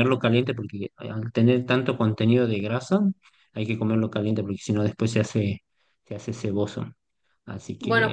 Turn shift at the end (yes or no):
yes